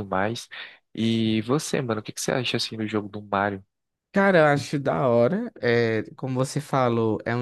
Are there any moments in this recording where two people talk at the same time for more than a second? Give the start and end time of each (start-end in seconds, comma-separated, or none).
none